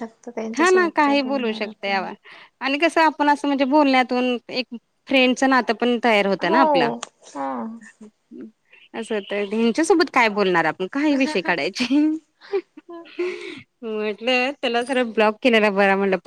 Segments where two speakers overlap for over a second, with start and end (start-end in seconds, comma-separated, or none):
0.6-2.0